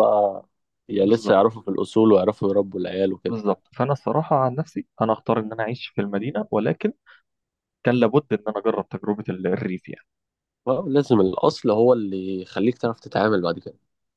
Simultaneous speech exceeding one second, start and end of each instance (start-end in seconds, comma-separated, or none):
none